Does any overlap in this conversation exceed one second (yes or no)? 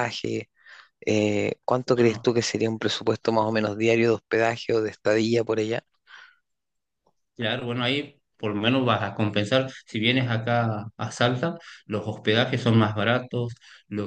no